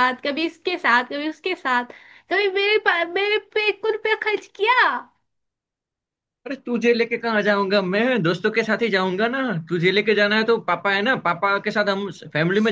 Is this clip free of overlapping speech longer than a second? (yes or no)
yes